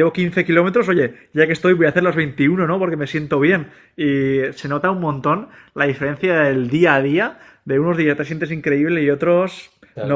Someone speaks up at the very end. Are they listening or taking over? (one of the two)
listening